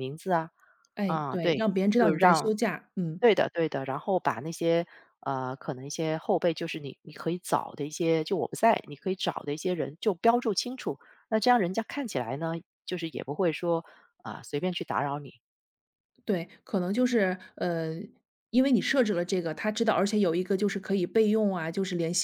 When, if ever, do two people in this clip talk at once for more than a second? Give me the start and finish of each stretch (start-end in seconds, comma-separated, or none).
1.0-2.5